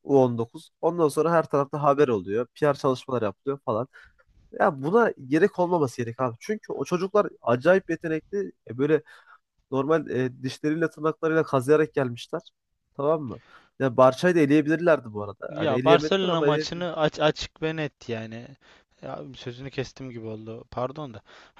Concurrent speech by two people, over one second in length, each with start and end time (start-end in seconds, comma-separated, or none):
15.5-16.9